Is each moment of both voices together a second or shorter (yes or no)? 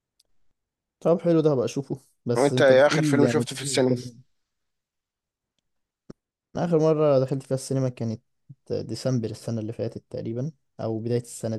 no